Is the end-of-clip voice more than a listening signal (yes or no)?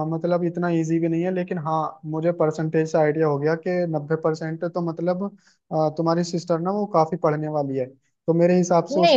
yes